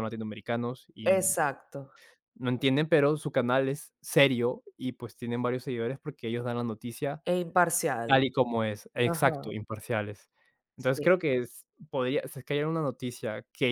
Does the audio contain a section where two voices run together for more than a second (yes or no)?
no